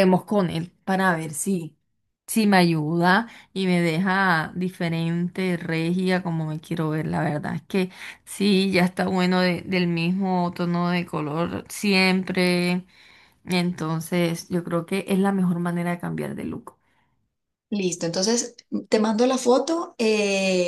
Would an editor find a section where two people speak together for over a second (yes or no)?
no